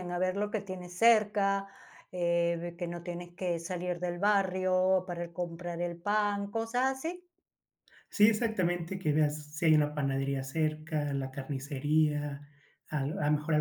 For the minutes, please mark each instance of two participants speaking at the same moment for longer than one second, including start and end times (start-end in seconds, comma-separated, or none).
none